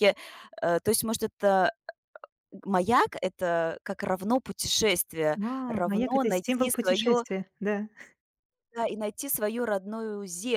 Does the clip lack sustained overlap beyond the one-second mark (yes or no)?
no